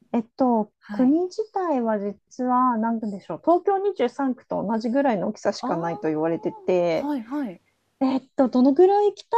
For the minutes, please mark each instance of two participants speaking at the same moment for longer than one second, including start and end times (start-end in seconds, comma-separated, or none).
5.6-7.1